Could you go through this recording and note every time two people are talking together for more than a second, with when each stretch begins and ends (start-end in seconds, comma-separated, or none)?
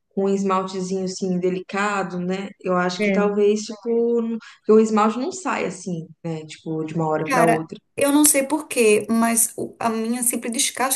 none